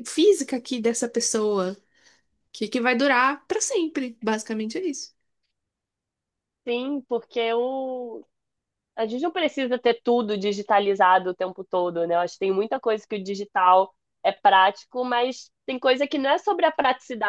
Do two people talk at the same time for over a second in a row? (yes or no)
no